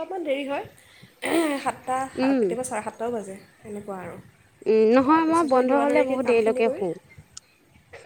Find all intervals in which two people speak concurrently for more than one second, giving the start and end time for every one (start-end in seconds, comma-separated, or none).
5.0-6.8